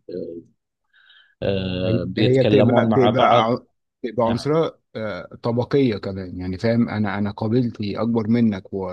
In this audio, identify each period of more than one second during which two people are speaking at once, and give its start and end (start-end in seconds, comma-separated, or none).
1.9-3.5